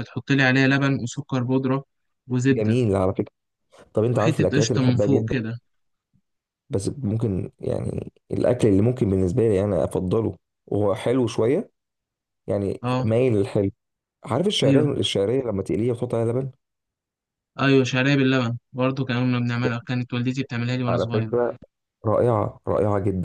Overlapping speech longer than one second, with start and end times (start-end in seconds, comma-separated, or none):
4.1-5.4